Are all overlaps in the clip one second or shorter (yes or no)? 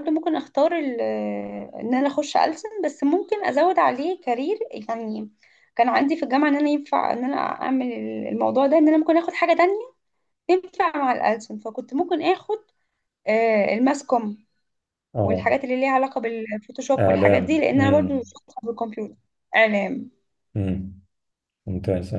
no